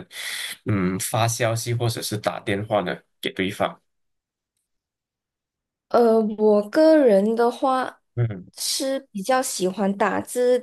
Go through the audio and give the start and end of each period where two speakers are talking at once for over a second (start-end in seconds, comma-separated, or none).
none